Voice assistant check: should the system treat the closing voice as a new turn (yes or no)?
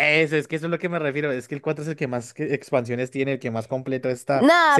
yes